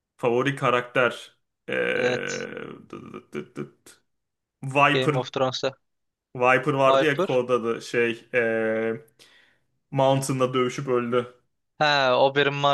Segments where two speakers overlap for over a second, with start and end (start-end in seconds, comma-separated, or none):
none